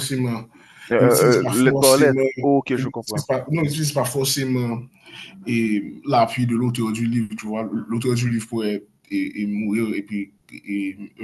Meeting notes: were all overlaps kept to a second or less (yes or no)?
no